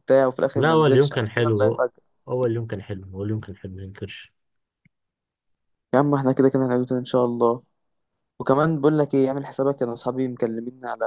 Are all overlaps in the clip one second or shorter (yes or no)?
no